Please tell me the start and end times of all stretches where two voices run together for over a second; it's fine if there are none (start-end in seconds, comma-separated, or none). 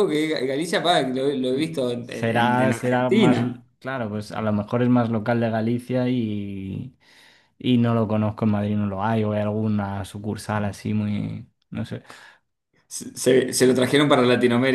2.1-3.4